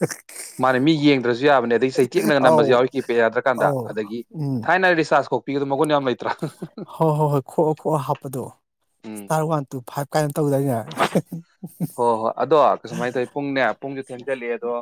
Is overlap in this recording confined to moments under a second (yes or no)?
yes